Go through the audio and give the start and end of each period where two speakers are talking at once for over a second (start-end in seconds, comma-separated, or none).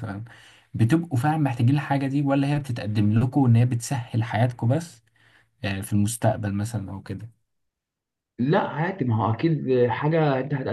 none